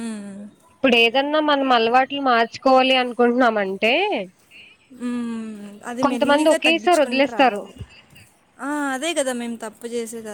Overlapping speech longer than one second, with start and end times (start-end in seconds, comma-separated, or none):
6.0-7.6